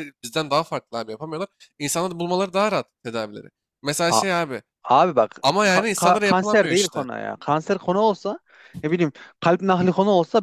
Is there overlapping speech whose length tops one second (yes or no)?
yes